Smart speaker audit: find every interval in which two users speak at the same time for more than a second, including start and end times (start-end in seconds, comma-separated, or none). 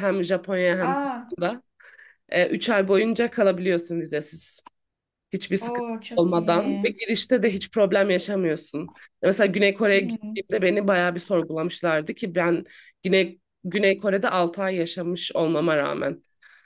5.6-6.9